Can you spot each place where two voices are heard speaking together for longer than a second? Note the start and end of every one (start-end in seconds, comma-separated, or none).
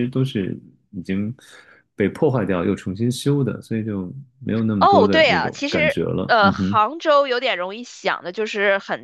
4.8-6.8